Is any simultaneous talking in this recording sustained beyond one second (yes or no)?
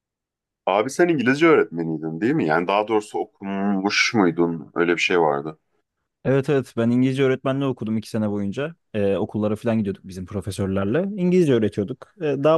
no